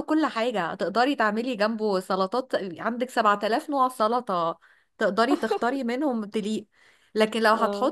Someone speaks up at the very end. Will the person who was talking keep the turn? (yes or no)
yes